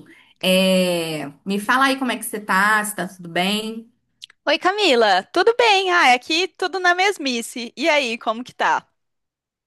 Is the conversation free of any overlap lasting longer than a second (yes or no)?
yes